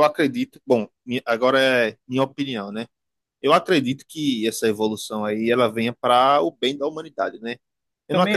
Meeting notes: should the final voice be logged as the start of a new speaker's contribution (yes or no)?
no